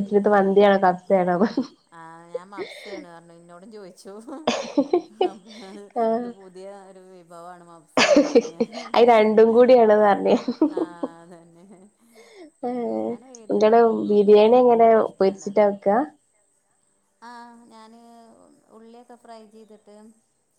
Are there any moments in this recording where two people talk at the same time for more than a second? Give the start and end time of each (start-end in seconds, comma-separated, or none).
13.5-15.7